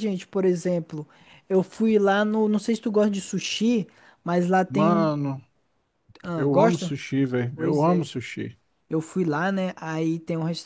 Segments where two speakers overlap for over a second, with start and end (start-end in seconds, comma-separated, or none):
none